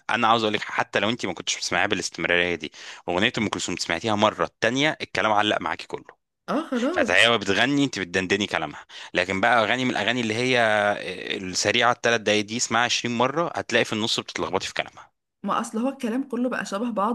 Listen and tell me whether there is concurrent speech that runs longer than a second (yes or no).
no